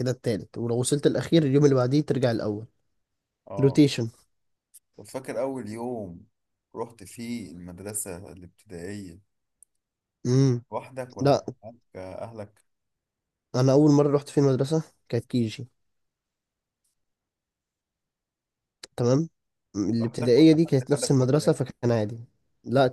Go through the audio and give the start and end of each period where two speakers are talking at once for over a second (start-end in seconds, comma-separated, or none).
20.0-21.5